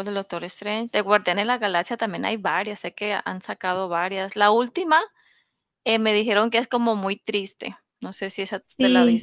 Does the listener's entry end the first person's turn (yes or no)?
yes